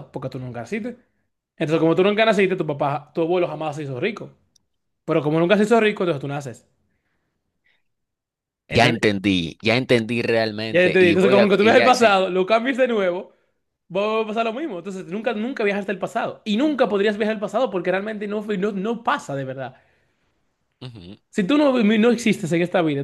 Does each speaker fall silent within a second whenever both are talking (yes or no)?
no